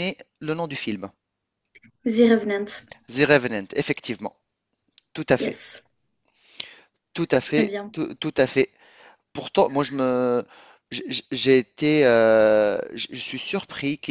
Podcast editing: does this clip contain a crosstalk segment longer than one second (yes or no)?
no